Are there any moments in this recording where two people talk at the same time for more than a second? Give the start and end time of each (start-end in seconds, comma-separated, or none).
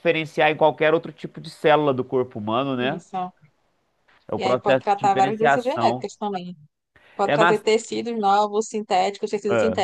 4.4-6.1